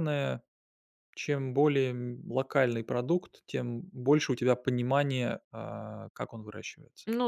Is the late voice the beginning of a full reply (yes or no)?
yes